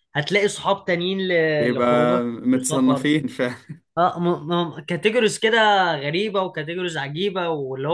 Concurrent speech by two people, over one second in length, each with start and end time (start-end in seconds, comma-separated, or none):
1.6-3.1